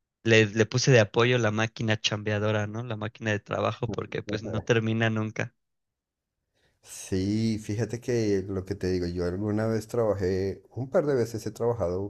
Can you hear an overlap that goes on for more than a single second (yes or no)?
no